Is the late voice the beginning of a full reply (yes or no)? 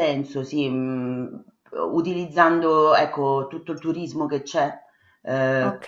no